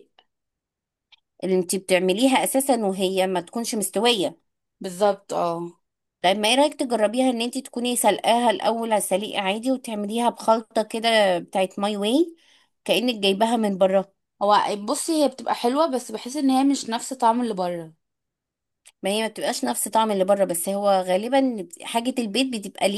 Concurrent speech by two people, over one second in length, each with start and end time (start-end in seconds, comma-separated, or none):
none